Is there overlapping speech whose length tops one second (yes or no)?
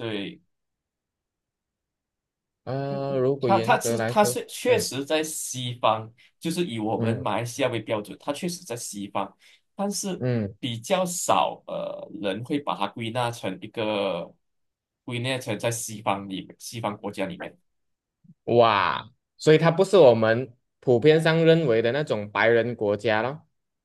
yes